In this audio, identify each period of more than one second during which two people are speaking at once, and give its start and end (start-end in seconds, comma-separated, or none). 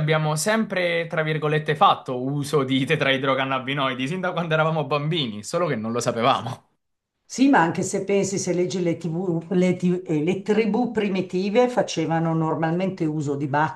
none